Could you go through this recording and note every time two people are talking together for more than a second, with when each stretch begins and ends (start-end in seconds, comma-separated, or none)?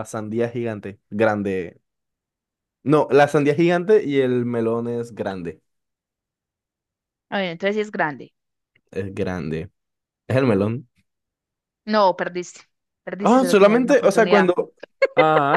13.2-14.5